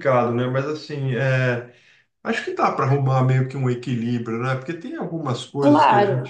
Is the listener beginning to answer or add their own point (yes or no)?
no